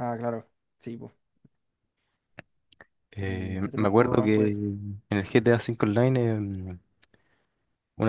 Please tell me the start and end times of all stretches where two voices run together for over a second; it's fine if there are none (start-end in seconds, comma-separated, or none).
3.2-4.6